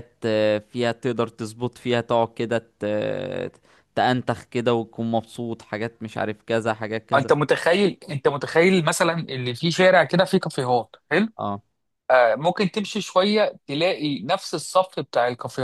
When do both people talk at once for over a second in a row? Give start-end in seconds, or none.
none